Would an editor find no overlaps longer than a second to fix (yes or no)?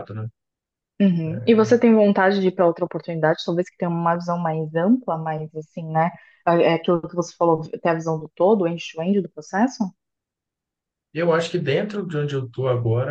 yes